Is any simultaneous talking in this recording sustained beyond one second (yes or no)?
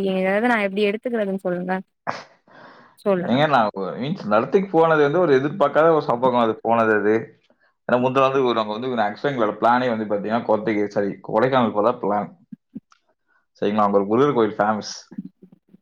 no